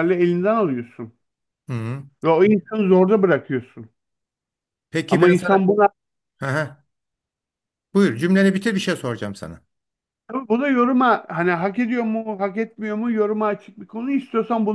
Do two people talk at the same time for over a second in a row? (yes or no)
no